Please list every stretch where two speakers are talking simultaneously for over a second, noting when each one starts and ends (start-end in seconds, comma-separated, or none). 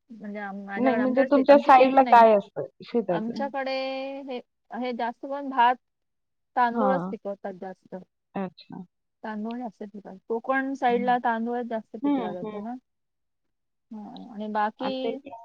0.8-2.2